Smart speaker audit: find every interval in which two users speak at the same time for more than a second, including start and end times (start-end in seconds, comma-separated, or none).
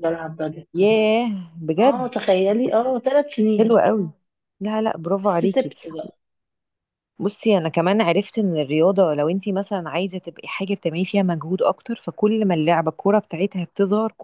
none